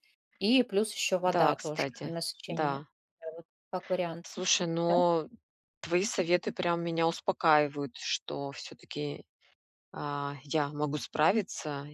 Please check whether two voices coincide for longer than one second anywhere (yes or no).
yes